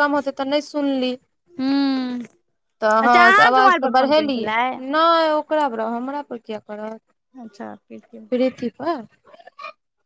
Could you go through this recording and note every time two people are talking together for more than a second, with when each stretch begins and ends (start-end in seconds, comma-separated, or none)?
3.0-4.5